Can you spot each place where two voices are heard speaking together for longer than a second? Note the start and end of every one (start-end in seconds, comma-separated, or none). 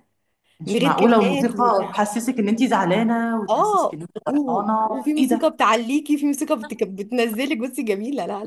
0.7-2.0, 3.5-5.5